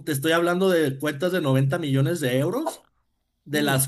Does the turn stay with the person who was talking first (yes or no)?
yes